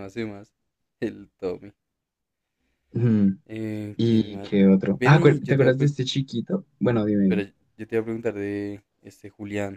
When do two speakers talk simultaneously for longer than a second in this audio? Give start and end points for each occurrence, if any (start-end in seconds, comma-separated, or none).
4.0-5.9